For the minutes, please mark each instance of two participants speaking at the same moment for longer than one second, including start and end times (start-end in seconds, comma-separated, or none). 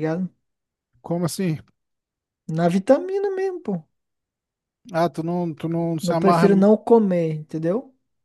none